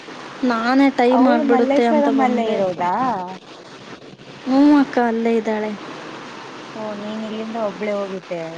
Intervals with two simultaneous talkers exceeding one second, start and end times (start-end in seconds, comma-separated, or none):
1.2-2.8